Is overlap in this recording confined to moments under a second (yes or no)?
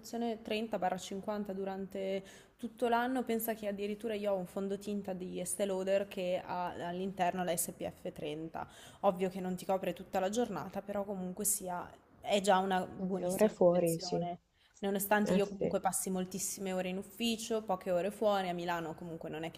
no